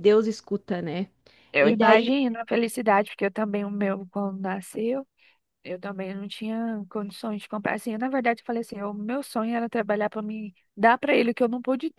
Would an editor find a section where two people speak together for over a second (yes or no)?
no